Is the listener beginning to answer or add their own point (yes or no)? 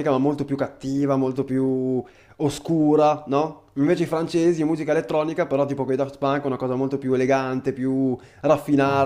yes